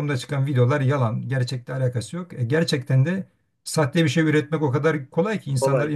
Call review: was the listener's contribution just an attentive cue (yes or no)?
yes